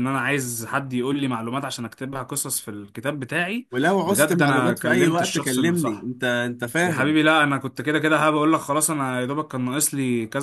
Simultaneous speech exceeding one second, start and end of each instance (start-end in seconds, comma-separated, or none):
4.0-6.1